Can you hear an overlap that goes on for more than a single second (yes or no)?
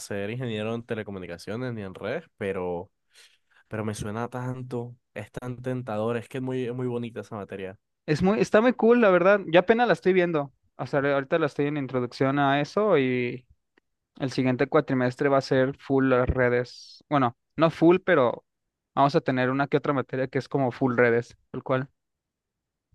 no